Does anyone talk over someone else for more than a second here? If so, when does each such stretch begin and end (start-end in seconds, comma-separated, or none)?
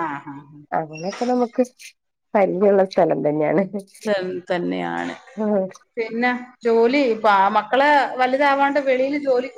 none